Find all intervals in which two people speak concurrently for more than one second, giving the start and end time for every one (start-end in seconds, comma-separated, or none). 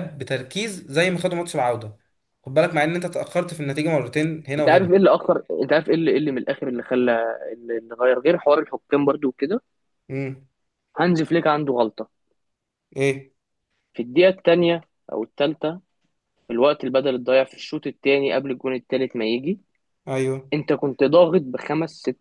none